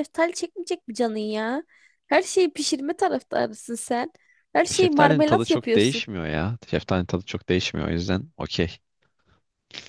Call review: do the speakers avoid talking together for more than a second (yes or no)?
no